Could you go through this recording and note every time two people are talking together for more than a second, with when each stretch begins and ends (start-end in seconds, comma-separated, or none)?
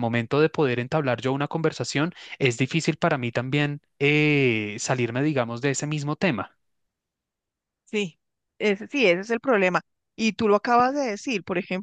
none